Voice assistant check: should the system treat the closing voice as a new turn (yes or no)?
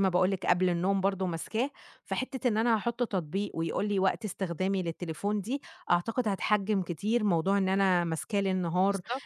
no